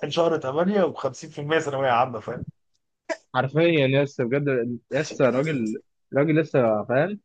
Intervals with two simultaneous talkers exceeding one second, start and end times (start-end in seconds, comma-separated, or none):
none